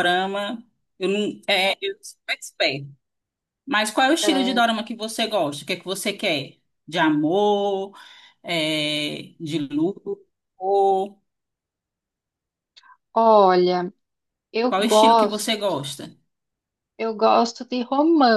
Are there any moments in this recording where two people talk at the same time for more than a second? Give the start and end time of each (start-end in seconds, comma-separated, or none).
14.6-15.8